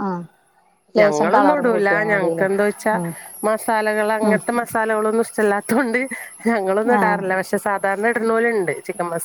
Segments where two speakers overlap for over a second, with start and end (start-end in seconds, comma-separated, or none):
1.0-2.5